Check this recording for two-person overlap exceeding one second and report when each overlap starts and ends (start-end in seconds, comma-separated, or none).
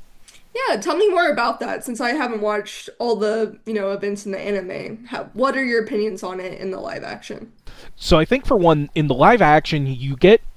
none